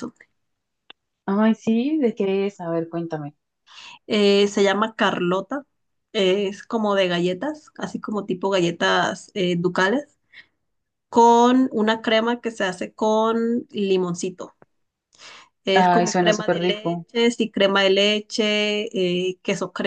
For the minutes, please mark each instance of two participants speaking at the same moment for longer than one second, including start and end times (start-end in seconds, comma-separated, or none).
15.7-17.0